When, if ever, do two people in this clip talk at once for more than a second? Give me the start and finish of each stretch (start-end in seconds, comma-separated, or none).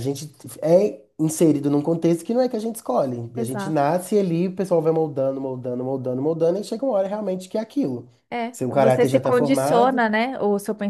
8.5-10.1